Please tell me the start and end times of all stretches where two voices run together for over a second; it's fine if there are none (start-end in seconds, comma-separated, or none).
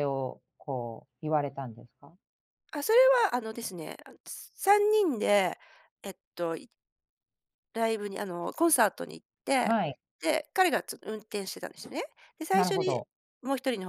none